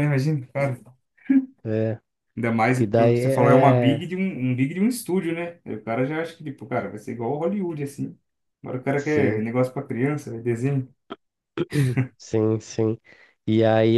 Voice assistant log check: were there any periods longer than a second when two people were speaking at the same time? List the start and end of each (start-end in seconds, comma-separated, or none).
2.8-4.1